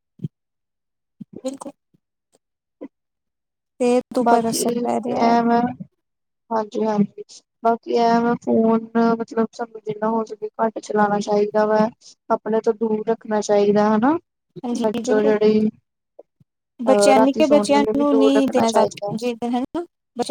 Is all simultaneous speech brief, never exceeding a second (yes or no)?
no